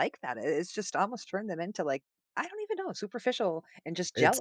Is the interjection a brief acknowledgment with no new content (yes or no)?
no